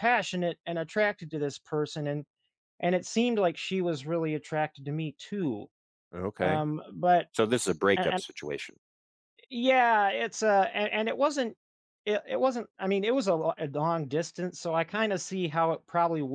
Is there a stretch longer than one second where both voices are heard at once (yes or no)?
no